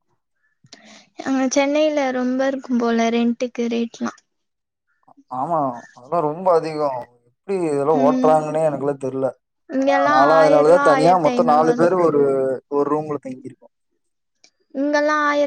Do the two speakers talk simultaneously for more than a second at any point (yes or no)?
yes